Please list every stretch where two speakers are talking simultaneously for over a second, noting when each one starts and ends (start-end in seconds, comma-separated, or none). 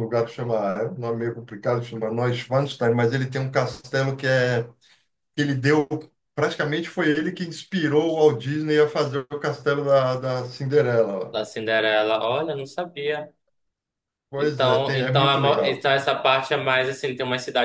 14.4-15.9